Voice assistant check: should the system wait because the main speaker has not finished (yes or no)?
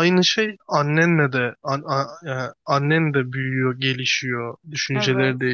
yes